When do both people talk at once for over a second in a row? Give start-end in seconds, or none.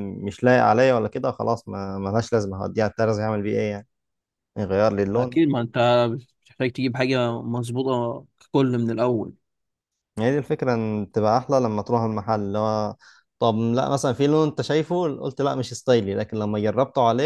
none